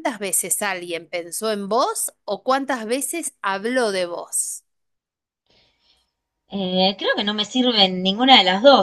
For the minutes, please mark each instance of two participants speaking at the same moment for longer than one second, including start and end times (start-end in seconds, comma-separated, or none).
none